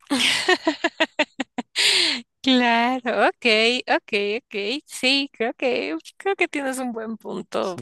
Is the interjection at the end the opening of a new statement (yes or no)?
yes